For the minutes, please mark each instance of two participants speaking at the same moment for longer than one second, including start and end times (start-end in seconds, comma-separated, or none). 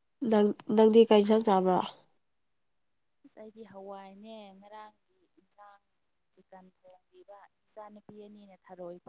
none